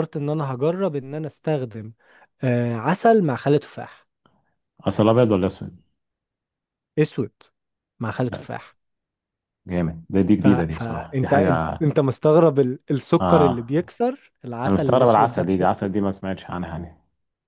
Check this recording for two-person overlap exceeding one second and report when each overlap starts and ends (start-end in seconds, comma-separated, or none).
10.4-11.8, 14.7-15.9